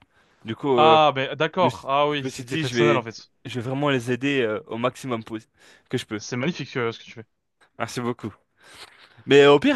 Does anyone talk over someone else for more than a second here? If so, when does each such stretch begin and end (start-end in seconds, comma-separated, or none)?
1.6-3.0